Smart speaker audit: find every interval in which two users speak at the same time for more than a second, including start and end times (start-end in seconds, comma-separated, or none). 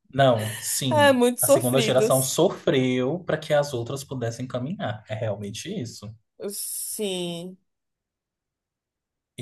0.9-2.4